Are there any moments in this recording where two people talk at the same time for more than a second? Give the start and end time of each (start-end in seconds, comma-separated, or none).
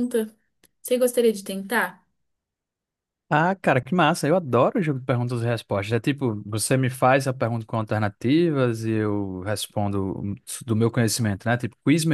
none